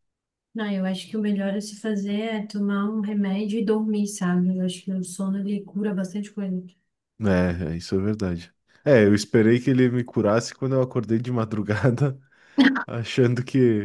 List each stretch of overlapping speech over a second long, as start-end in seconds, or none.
none